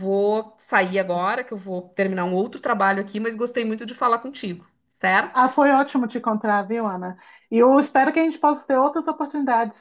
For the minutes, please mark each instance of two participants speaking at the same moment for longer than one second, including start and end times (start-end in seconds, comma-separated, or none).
none